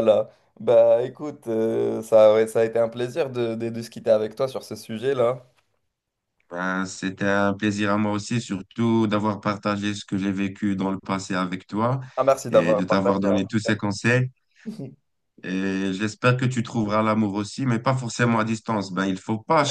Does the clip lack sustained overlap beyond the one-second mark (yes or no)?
no